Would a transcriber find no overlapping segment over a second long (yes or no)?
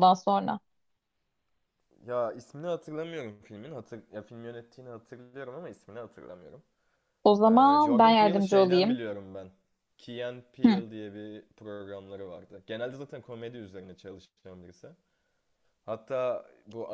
no